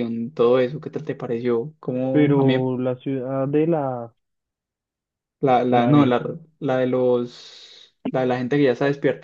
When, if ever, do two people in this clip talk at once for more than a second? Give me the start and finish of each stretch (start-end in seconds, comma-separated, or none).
none